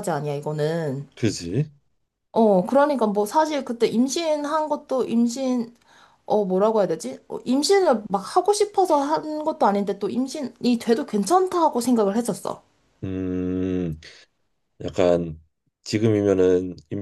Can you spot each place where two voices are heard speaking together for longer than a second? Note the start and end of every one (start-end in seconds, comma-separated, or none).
none